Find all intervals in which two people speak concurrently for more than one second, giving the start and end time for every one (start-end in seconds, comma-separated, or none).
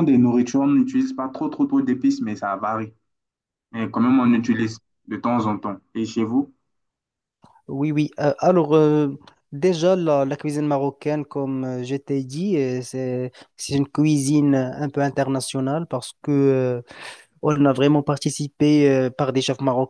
none